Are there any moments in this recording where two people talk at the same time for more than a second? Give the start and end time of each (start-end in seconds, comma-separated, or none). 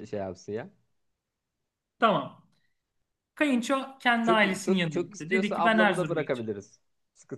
4.2-6.5